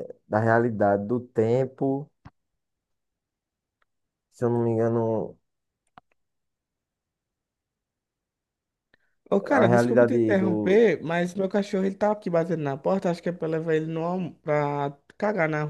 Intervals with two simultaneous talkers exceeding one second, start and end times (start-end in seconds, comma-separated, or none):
9.5-10.8